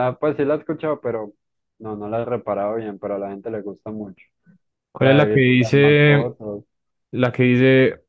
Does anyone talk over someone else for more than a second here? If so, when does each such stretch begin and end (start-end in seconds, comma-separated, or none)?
5.0-6.3